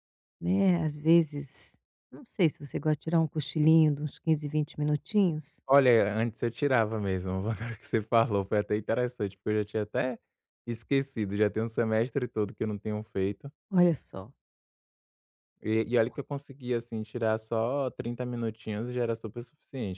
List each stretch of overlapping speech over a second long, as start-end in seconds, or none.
none